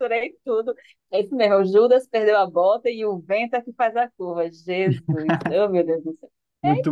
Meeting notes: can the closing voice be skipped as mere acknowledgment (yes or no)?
yes